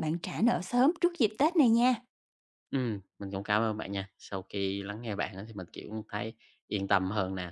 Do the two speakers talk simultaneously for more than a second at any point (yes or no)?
no